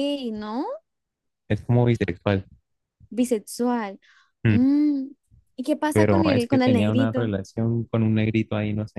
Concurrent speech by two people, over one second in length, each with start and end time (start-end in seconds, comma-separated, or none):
5.9-7.3